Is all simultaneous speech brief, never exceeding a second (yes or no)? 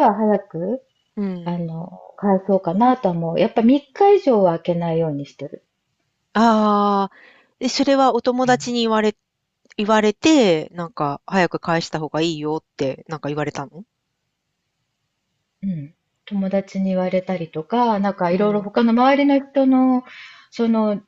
yes